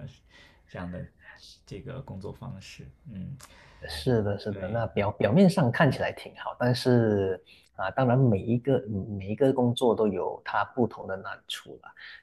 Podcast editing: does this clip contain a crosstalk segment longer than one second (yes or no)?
no